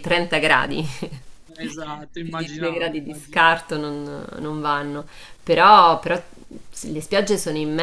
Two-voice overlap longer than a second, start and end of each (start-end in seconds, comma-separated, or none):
2.2-3.6